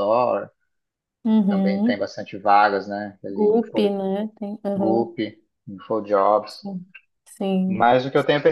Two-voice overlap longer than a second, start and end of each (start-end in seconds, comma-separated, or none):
none